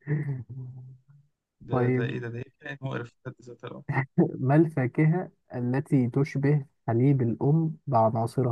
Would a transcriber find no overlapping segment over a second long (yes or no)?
yes